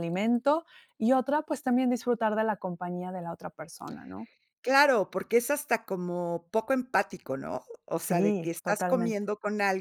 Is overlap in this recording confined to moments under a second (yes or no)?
no